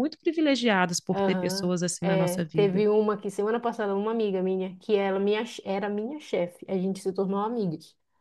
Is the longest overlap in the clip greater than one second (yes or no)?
yes